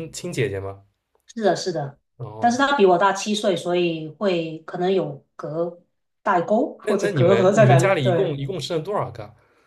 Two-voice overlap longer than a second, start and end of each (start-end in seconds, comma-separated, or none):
6.8-8.4